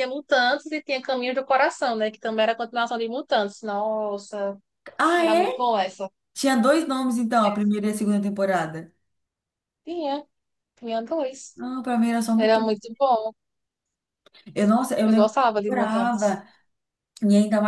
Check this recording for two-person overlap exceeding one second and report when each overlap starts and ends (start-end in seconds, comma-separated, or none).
15.0-16.4